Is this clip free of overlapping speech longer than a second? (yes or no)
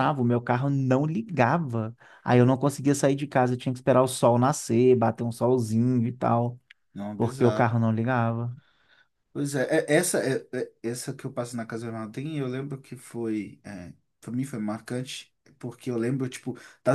yes